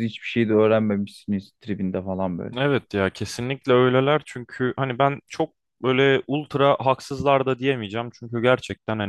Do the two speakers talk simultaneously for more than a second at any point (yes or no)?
no